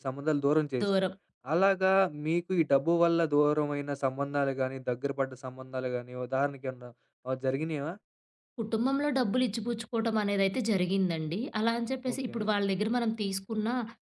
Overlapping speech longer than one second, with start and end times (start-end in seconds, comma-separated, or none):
none